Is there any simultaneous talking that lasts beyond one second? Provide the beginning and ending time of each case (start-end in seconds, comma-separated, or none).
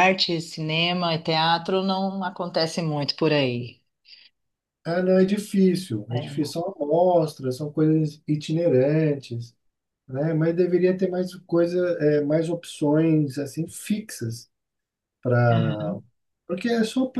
none